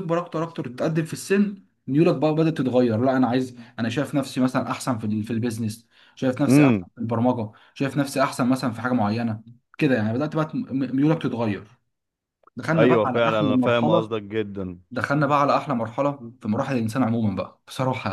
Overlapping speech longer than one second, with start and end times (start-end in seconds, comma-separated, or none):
12.8-14.1